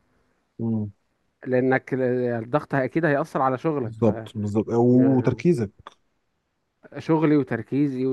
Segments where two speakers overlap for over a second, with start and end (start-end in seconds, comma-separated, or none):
none